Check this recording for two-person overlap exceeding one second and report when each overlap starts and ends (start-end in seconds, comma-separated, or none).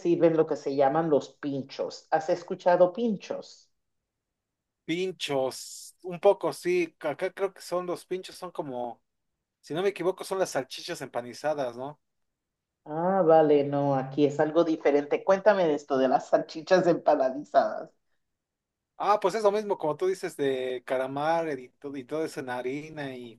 none